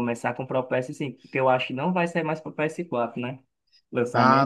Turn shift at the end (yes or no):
yes